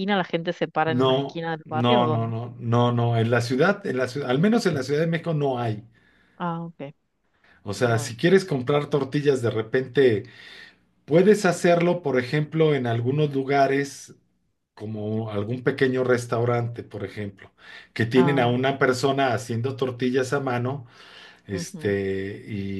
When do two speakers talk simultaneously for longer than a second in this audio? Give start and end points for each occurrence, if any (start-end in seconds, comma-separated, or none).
1.0-2.3